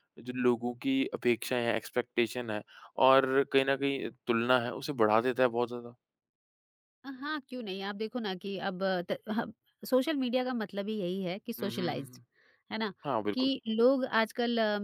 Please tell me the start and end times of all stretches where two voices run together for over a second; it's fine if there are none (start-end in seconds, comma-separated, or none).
none